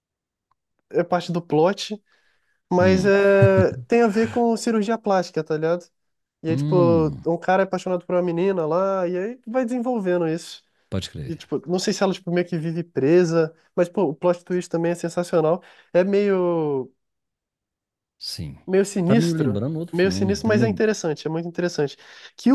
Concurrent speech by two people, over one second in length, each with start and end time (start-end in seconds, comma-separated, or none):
19.0-20.9